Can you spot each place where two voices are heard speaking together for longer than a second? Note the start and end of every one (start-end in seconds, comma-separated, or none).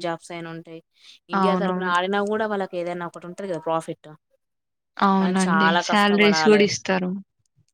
5.2-6.6